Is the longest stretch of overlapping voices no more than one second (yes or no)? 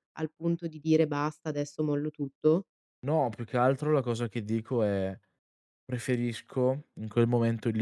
yes